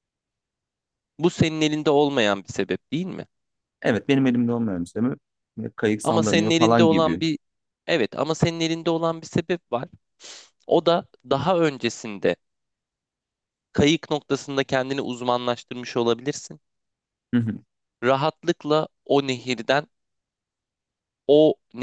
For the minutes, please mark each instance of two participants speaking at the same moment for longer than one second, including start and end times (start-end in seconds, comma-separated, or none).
6.0-7.2